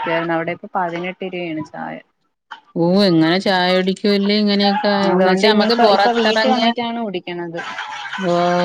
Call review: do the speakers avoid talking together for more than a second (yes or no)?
no